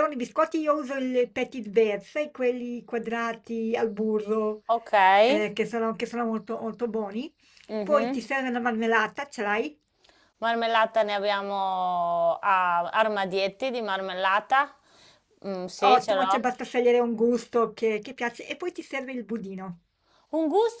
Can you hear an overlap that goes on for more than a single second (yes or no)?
no